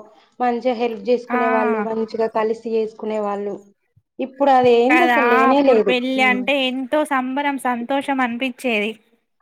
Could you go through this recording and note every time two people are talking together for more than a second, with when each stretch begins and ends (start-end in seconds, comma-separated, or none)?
none